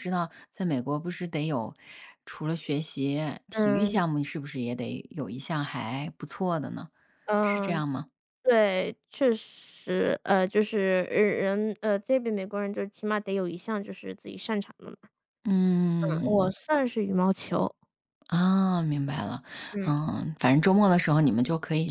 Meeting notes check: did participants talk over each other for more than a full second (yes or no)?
no